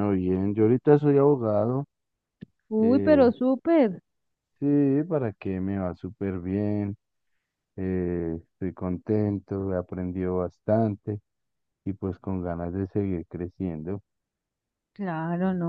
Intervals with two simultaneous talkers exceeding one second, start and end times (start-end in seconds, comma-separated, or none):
none